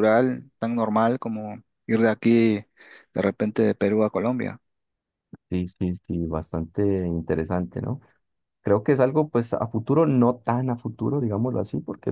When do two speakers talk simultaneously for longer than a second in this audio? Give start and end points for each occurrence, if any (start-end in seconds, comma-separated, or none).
none